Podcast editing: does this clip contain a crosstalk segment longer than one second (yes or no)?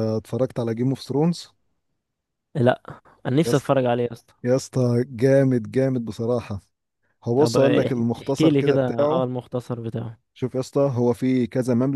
yes